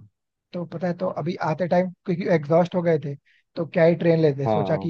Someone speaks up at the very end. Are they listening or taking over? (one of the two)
listening